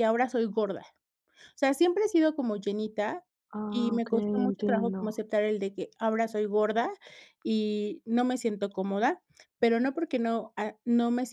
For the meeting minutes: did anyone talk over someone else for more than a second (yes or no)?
yes